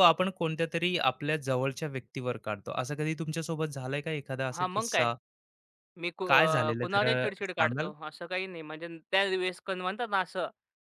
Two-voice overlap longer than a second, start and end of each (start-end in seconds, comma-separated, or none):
6.2-7.9